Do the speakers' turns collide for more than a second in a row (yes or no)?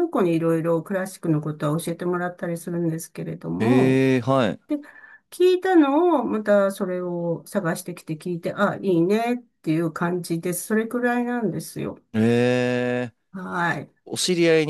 no